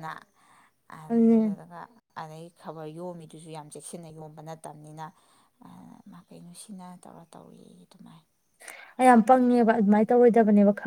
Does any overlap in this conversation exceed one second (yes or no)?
no